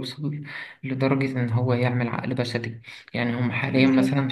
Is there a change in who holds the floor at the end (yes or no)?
no